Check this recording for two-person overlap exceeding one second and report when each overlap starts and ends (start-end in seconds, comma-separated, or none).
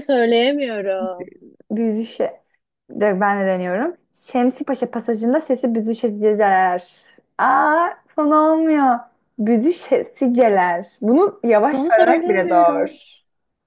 11.6-13.1